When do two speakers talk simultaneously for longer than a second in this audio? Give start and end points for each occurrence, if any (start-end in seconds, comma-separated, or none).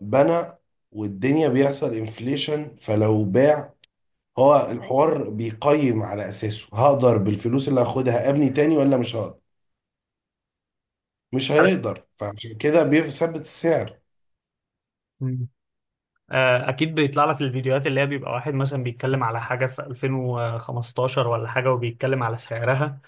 none